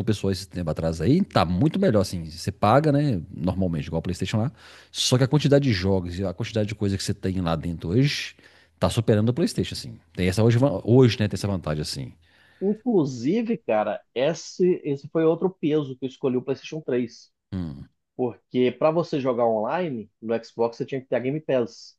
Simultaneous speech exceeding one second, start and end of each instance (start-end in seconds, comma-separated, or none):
none